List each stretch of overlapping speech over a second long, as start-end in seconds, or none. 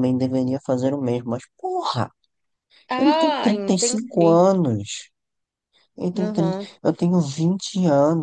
3.0-4.4